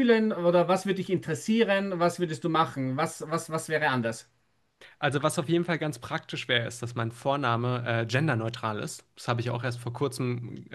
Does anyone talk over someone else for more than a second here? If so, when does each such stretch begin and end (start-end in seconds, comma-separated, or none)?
none